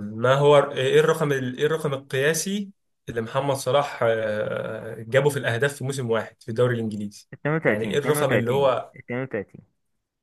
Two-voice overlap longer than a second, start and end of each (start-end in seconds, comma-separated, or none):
7.7-8.9